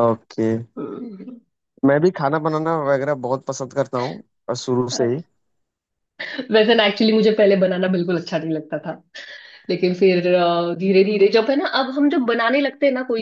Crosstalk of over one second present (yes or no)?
no